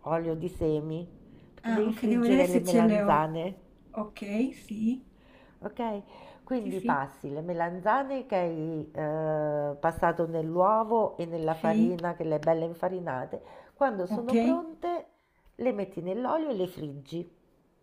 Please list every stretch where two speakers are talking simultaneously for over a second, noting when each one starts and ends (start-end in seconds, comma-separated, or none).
1.6-3.3